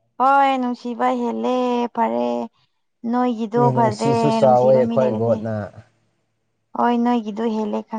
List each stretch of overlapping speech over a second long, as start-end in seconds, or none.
3.5-5.4